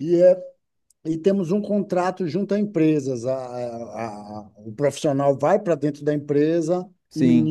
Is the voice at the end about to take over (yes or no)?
yes